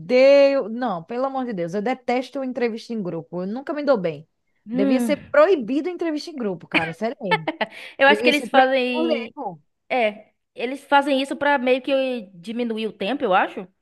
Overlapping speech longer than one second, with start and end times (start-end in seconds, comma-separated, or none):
8.1-9.3